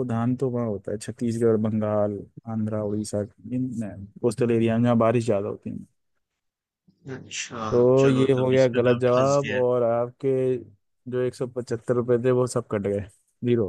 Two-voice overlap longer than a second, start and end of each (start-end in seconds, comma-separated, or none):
8.0-9.6